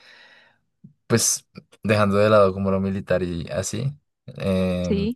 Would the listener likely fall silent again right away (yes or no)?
yes